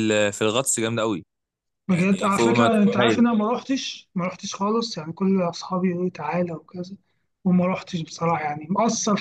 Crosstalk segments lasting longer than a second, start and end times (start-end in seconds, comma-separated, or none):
1.9-3.3